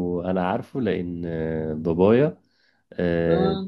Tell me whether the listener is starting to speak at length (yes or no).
no